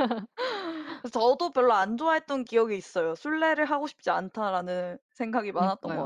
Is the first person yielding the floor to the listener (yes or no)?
yes